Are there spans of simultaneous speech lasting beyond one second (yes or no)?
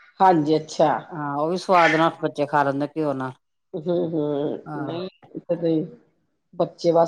no